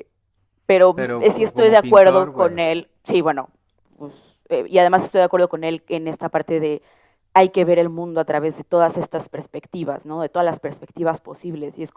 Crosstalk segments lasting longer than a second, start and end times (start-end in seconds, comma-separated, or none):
1.0-2.6